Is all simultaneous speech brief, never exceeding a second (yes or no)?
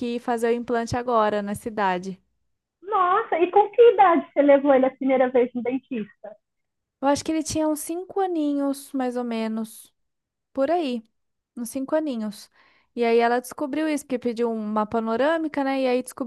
yes